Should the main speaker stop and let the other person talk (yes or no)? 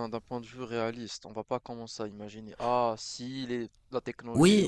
yes